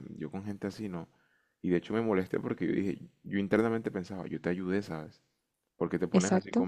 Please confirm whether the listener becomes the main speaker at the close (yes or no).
no